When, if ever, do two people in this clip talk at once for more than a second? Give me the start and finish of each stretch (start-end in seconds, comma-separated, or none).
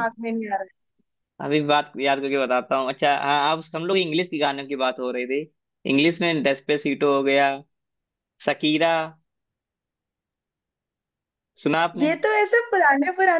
none